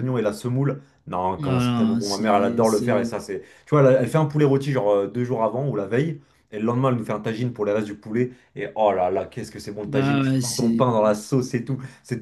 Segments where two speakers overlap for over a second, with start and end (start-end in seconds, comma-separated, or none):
1.4-3.1, 9.8-11.2